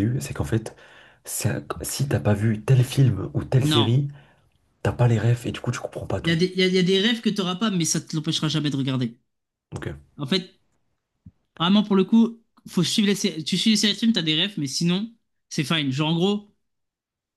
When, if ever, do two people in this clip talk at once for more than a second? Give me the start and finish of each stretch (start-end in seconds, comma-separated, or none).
none